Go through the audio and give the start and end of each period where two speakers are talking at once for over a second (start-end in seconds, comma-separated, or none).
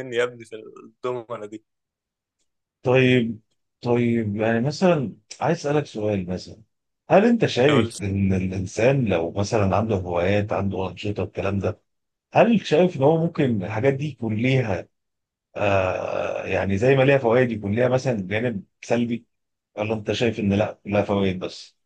none